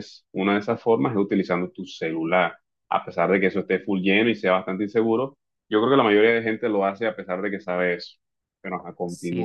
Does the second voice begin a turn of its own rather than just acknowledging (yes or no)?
yes